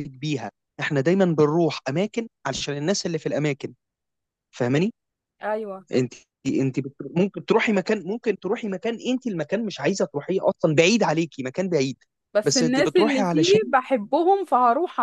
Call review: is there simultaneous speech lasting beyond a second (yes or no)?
yes